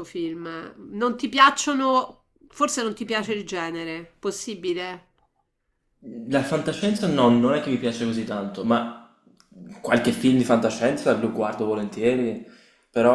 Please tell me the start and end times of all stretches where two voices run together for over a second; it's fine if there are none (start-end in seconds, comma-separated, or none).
none